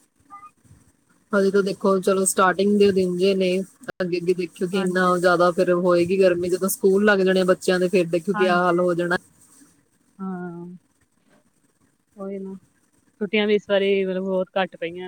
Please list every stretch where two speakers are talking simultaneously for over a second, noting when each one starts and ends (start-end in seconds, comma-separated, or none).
none